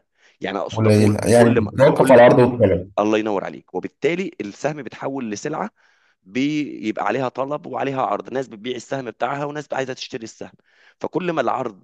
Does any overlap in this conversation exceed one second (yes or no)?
yes